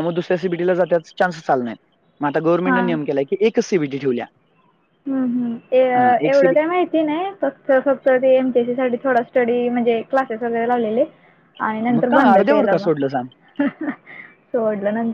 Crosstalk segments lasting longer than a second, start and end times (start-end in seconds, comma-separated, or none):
11.9-13.3